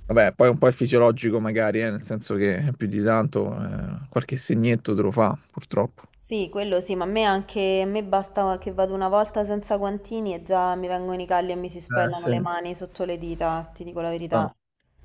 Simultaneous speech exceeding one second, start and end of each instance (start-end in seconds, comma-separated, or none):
none